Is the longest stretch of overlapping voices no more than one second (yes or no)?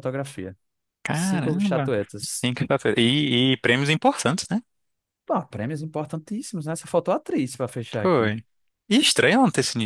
no